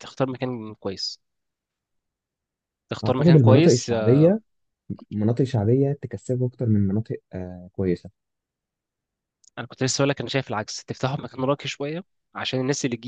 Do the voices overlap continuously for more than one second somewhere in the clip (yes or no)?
yes